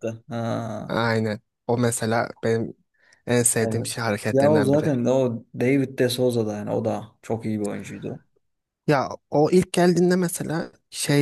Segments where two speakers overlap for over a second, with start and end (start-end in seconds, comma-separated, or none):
3.6-4.9